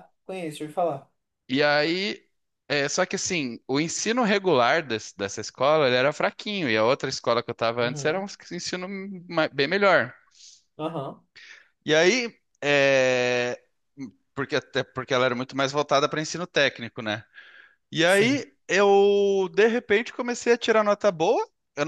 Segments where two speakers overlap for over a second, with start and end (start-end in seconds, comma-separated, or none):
none